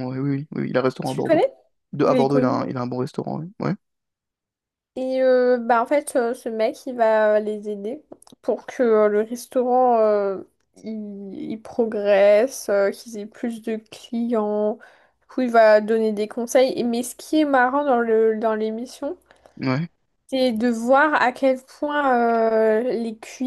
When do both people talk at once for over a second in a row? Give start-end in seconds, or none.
none